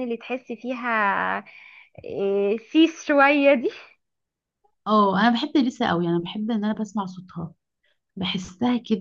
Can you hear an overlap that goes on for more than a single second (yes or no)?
no